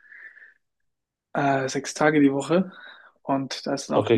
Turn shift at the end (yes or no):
no